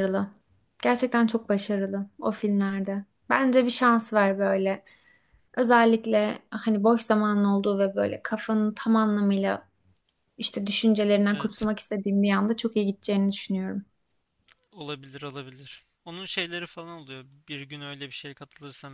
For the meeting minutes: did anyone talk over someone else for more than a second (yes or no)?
no